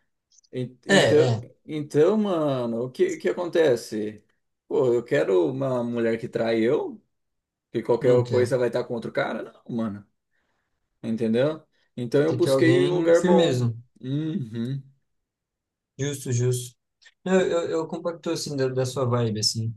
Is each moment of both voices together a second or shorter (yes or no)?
no